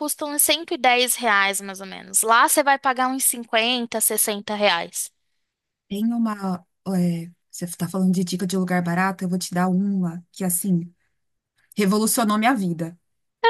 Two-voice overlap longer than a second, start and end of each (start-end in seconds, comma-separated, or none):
none